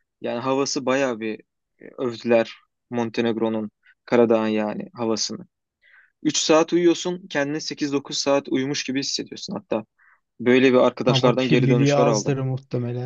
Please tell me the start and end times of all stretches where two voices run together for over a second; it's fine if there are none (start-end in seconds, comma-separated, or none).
11.1-12.4